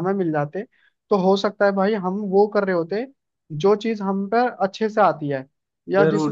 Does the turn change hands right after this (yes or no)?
yes